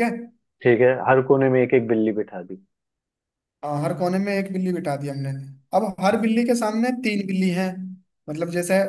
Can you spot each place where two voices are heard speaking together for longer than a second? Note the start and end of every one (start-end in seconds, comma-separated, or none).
none